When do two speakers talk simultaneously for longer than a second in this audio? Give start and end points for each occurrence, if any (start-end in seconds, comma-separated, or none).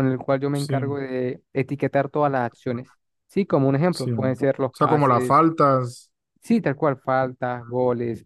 3.9-5.3